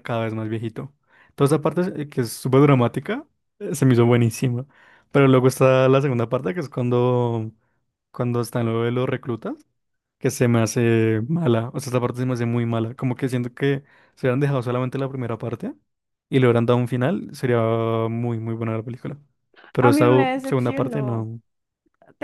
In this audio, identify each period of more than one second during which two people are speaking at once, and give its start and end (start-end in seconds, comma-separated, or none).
19.8-21.3